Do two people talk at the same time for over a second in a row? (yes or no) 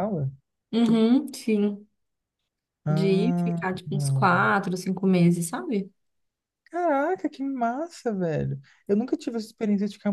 yes